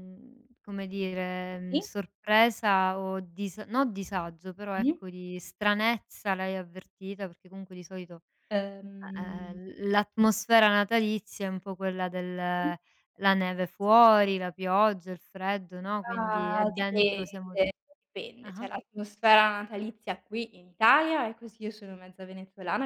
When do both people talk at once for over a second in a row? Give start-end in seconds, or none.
16.0-17.6